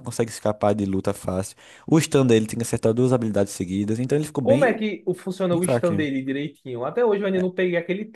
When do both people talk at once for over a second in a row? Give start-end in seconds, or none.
none